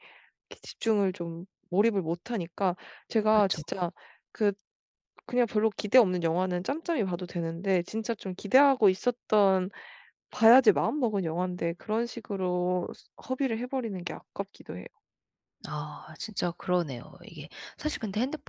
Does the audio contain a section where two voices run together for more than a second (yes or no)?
no